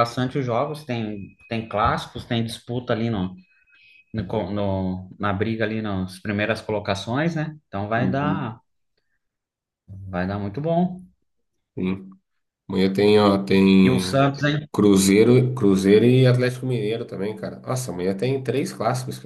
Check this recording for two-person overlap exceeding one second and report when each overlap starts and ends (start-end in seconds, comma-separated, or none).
none